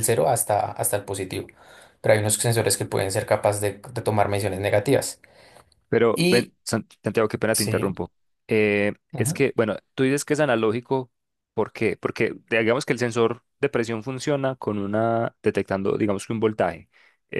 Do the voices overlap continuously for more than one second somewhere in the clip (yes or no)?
no